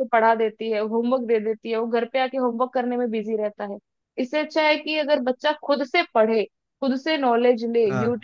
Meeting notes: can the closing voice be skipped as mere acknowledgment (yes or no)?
yes